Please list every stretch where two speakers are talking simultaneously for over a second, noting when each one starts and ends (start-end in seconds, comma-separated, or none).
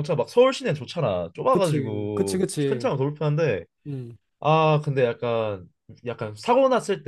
1.5-2.9